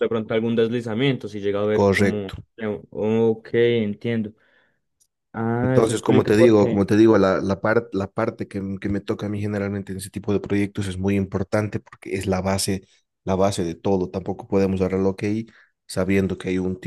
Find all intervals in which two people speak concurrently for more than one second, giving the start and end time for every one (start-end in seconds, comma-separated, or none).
5.6-6.9